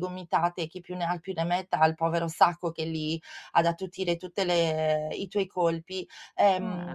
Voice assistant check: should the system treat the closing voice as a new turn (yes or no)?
no